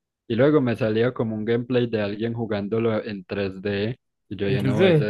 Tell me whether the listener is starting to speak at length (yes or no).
no